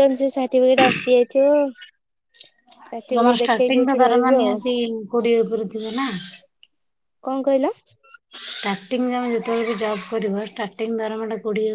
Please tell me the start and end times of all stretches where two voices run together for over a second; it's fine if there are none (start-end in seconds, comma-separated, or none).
3.0-4.5